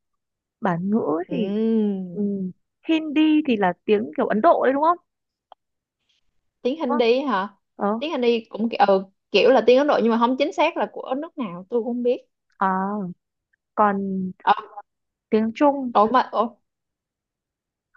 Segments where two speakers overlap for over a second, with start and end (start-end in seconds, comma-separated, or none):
none